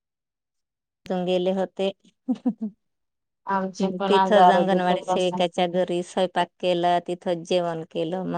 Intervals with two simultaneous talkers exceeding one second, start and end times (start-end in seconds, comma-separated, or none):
3.8-5.4